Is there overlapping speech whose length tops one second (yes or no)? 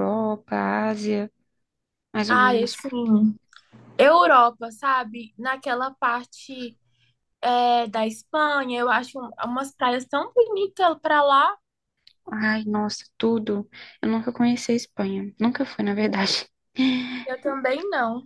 no